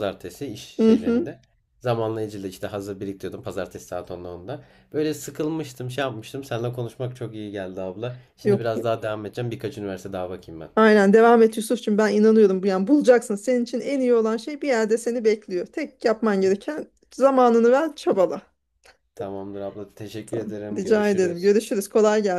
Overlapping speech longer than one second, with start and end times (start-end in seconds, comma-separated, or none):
20.3-21.6